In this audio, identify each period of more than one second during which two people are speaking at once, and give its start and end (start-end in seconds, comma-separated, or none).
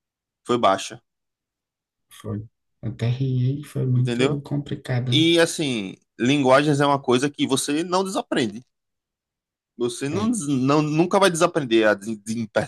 none